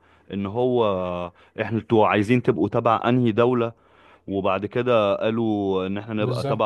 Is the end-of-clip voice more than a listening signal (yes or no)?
no